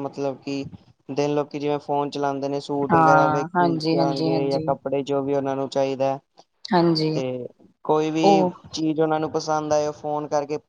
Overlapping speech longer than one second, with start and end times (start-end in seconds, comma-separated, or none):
2.9-4.7